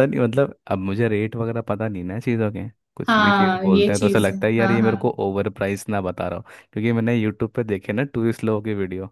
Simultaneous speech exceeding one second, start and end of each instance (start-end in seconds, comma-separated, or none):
3.1-5.0